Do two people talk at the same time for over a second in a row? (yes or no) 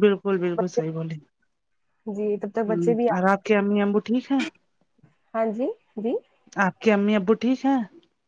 no